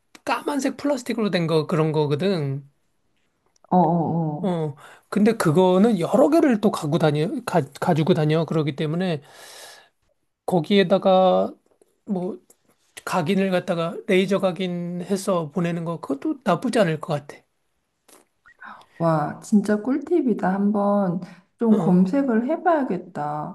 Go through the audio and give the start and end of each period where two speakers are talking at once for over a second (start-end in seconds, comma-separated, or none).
none